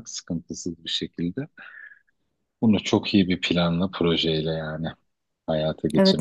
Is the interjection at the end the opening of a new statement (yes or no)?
yes